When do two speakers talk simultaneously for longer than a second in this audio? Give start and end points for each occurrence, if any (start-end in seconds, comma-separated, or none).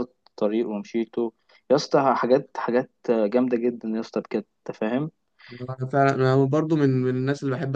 none